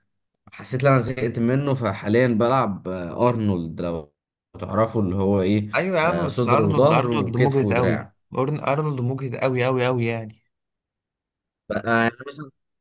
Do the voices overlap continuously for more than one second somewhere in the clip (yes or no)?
yes